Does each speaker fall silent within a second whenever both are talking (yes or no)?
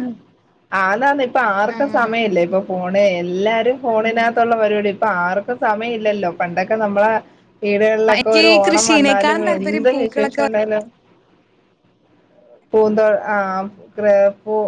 no